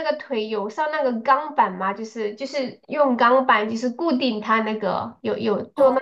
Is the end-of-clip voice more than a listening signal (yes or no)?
yes